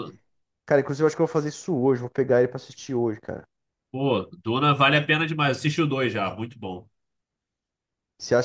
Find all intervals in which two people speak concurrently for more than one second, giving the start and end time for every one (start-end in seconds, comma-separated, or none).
none